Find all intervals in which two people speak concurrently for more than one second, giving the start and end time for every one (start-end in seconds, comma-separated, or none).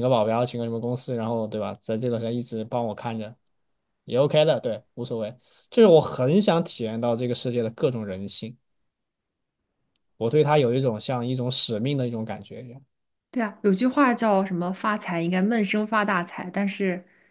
none